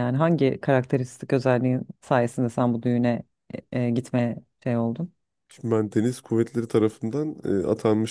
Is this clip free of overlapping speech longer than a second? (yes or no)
yes